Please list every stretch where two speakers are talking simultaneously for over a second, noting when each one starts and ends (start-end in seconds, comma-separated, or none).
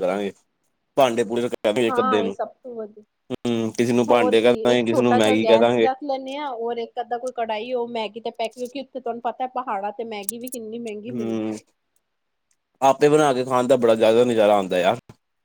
4.4-5.9